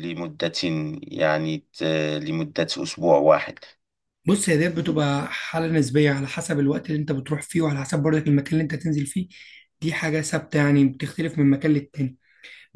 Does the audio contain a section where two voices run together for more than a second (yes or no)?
no